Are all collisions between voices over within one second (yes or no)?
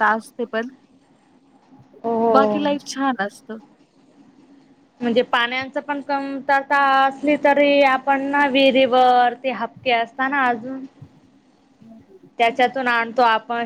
yes